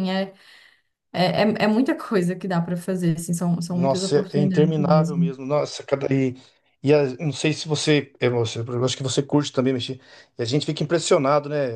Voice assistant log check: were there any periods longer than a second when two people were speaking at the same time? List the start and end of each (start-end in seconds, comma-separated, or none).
3.7-5.3